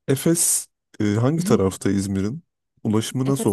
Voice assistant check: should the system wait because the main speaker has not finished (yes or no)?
no